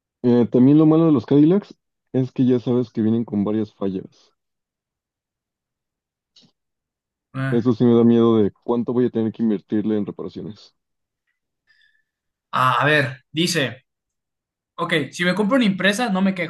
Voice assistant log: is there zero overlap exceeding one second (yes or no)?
yes